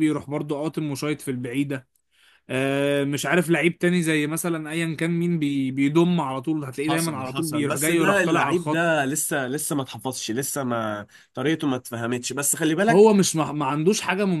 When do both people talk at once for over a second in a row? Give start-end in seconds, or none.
6.9-9.1